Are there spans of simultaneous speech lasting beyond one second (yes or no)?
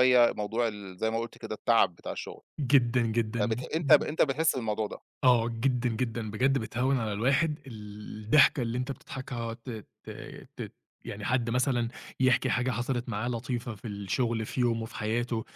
no